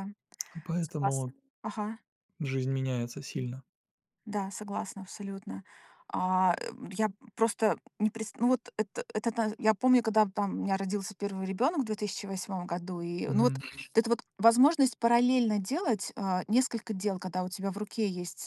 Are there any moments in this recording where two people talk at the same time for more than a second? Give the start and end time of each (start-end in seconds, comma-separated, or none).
none